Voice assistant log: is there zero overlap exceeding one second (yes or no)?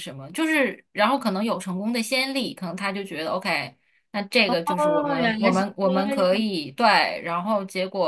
no